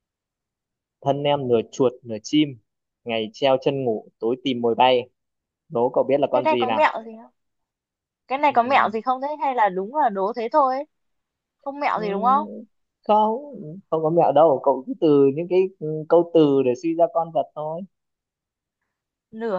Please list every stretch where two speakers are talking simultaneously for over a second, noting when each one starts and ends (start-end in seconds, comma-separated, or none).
none